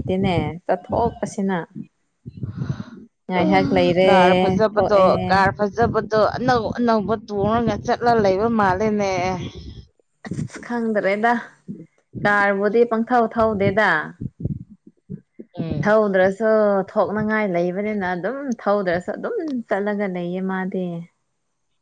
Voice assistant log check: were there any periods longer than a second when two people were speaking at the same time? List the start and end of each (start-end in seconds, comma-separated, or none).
none